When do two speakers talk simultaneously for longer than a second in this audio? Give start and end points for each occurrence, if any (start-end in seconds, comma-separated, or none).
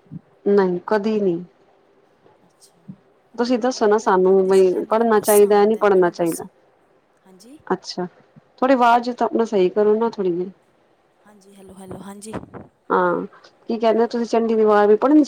3.6-6.4